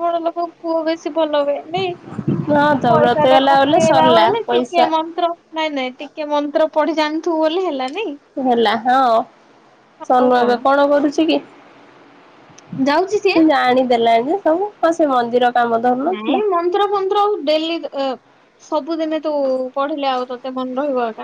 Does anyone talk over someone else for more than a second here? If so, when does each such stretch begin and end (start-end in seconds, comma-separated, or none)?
2.9-4.9